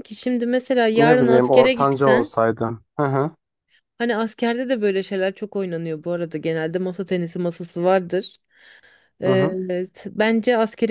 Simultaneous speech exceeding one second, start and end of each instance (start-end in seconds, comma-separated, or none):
0.9-2.3